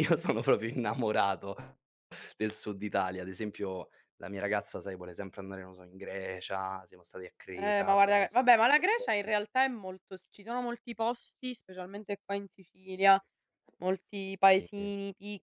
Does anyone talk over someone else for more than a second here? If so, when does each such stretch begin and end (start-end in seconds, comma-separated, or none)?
7.5-9.3